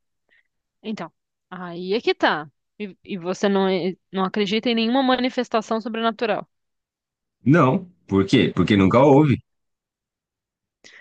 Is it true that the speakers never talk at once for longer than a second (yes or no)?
yes